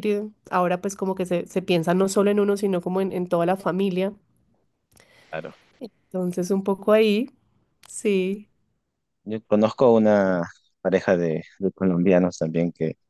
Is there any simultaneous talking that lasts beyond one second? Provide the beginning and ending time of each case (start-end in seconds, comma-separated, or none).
none